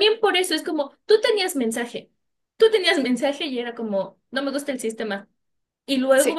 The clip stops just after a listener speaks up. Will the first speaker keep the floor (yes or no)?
yes